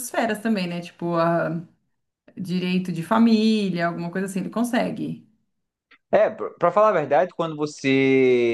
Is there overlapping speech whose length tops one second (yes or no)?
no